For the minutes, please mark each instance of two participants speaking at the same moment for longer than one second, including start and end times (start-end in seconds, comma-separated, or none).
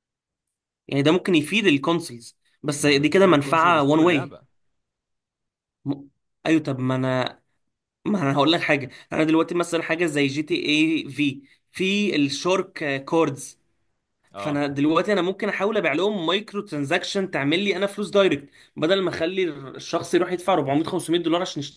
2.8-4.4